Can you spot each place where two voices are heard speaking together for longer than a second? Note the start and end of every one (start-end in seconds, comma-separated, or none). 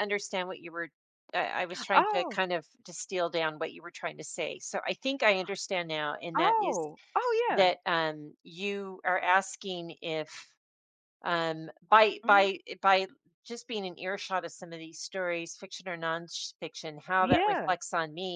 none